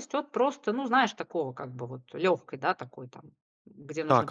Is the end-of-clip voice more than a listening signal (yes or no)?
yes